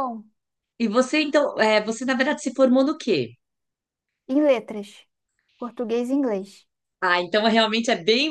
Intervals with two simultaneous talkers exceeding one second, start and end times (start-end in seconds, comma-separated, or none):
none